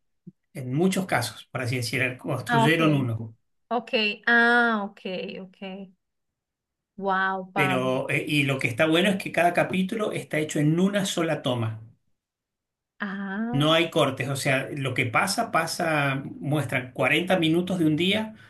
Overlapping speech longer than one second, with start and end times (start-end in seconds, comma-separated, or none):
none